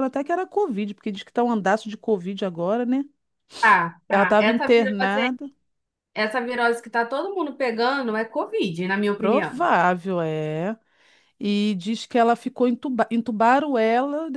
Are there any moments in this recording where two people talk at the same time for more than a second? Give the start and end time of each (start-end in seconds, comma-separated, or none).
4.1-5.4